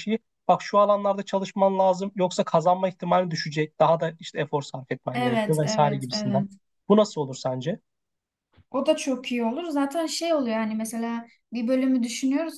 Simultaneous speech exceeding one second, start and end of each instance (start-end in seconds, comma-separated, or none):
5.1-6.4